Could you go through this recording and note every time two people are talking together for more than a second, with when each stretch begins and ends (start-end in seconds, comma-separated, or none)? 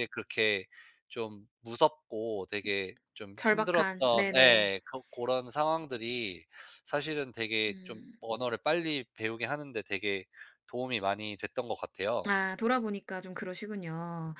3.4-4.7